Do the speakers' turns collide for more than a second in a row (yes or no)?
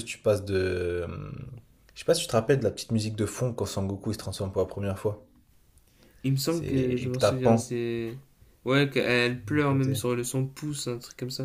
yes